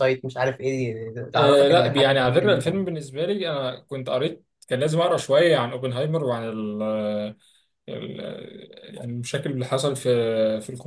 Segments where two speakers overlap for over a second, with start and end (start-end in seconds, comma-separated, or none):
1.4-2.6